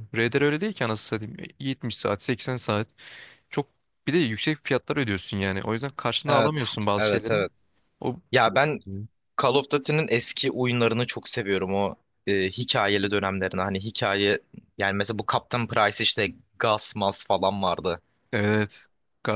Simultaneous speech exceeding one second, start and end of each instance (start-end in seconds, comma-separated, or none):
6.2-7.5